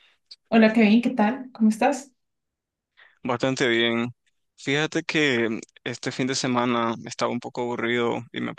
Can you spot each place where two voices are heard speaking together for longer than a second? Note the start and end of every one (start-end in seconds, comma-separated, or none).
none